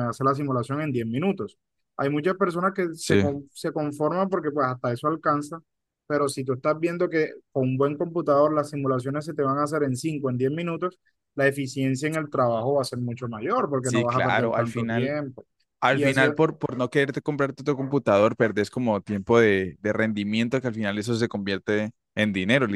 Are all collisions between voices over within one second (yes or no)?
no